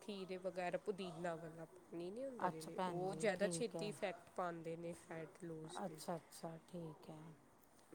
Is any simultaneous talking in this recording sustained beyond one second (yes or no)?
yes